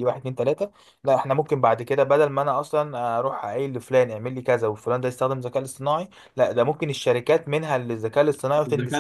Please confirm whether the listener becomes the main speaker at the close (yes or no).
yes